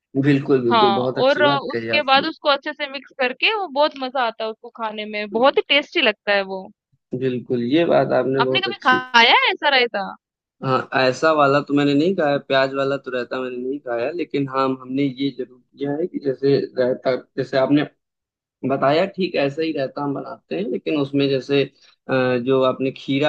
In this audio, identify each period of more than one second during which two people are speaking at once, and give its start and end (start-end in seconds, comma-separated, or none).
0.7-2.2